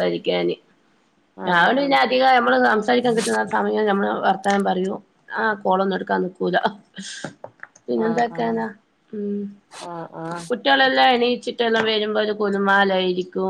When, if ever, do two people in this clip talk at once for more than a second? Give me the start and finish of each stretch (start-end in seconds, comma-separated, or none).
none